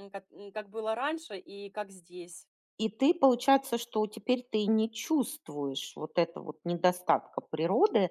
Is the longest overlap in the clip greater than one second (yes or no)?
no